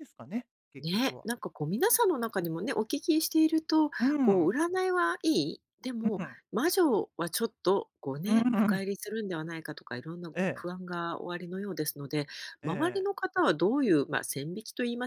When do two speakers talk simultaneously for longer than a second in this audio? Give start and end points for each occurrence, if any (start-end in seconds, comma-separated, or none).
none